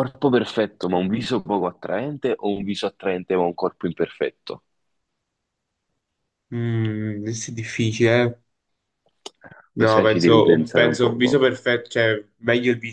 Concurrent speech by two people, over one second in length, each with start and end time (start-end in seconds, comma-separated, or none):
9.8-11.4